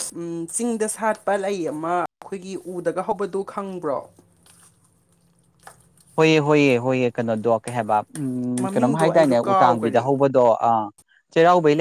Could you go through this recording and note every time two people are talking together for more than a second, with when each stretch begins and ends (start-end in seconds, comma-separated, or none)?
8.6-10.1